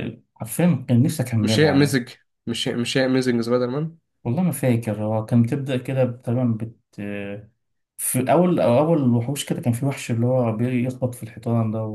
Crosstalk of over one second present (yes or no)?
no